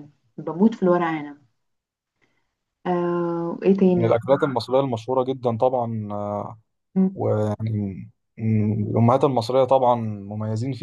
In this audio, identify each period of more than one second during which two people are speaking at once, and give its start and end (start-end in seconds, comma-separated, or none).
none